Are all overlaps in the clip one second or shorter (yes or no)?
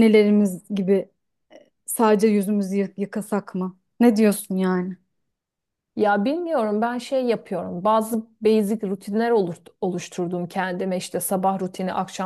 yes